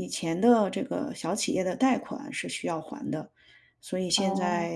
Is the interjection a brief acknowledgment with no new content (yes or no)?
yes